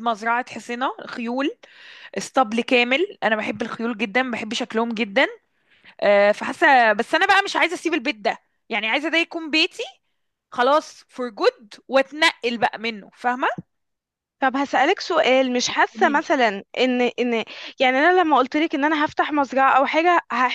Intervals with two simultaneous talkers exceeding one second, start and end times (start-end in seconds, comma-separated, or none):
none